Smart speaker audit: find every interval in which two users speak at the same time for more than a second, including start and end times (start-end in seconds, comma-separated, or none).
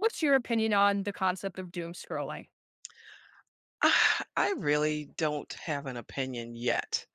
none